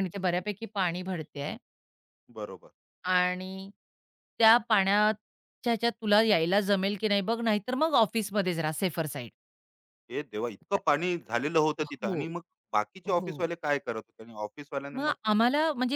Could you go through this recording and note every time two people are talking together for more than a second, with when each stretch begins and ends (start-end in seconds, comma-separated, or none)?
none